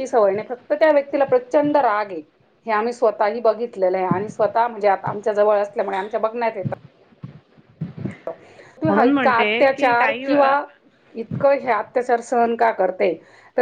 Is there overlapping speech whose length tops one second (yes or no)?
yes